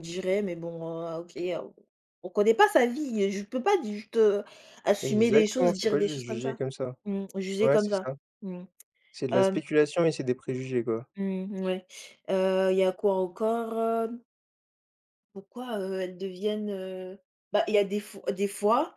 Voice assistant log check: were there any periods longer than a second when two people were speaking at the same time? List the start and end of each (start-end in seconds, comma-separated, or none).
5.0-6.6